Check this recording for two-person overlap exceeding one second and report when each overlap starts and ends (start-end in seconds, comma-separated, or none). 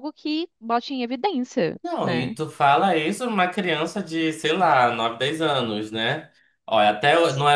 none